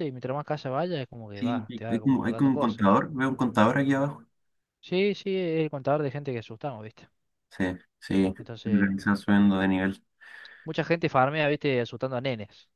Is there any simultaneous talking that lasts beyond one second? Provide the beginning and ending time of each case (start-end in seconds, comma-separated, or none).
1.3-3.0